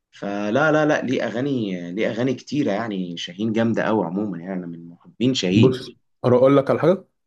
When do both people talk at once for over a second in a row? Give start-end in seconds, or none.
none